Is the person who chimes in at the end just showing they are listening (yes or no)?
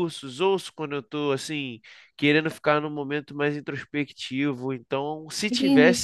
no